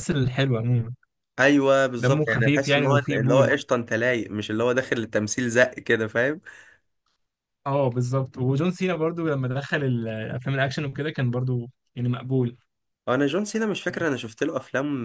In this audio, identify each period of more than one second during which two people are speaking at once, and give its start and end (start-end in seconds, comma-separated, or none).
2.0-3.5